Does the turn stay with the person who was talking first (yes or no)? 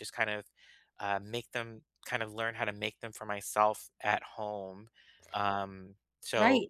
no